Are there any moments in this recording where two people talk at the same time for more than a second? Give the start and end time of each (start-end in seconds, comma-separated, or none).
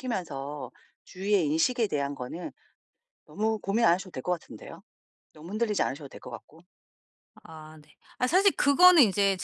none